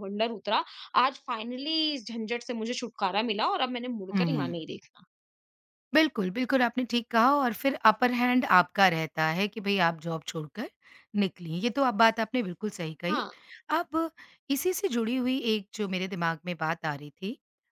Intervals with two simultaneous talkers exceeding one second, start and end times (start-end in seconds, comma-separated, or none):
none